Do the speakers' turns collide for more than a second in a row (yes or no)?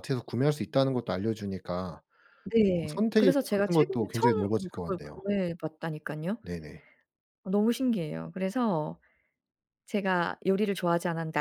yes